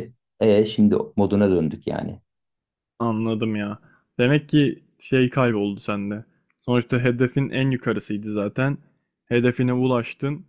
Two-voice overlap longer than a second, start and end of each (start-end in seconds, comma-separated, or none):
none